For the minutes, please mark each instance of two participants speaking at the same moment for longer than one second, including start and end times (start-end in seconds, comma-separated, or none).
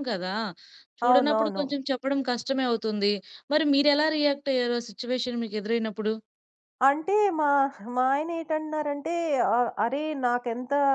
none